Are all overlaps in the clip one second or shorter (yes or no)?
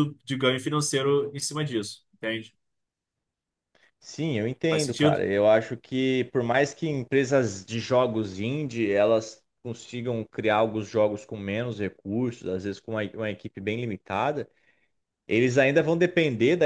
yes